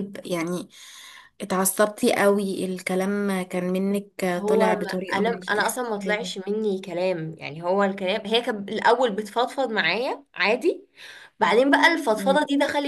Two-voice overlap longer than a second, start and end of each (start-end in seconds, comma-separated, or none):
4.3-6.4